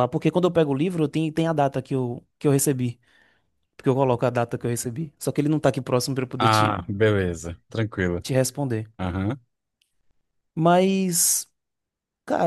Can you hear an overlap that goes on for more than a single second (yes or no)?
no